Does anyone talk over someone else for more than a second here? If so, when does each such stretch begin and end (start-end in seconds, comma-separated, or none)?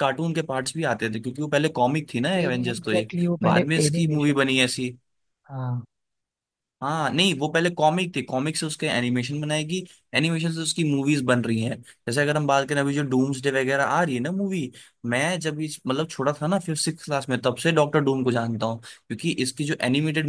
2.5-4.6